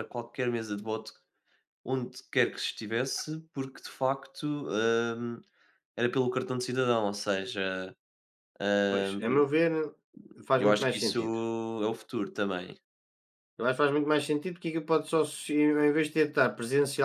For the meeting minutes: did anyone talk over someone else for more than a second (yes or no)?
no